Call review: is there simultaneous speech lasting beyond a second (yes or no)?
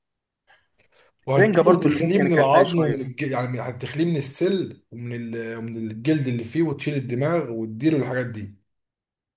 yes